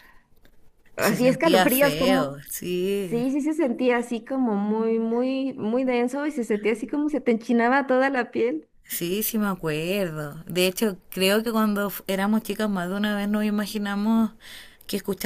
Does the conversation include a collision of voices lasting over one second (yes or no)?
yes